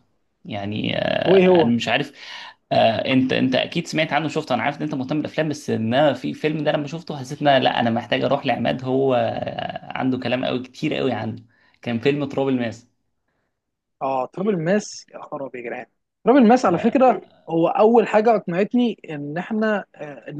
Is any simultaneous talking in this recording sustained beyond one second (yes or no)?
no